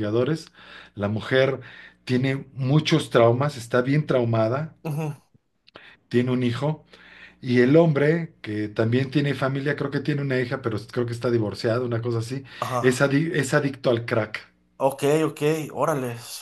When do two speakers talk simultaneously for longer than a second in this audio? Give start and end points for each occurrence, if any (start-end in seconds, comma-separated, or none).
none